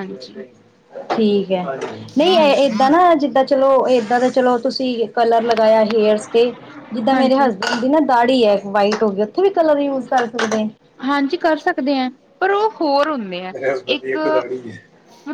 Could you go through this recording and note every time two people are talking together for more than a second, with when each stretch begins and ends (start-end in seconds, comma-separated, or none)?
none